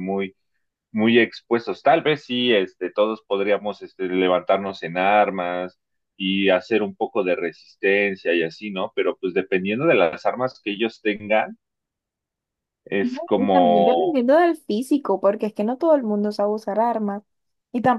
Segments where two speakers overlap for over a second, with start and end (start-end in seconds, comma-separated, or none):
13.0-14.2